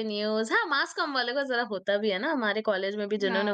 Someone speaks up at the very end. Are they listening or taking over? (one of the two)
taking over